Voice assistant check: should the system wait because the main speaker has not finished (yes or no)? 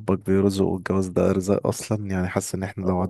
yes